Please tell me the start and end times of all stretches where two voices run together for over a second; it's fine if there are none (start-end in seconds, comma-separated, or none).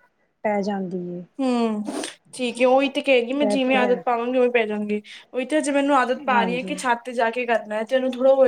none